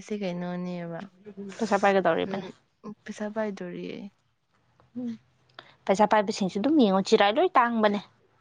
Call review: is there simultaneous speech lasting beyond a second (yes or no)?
no